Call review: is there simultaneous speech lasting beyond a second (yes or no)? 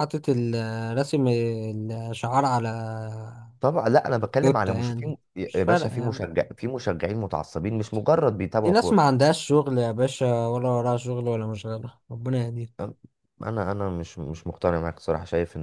yes